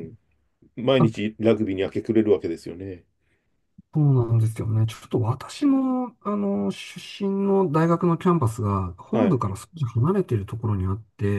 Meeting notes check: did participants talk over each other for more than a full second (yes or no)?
no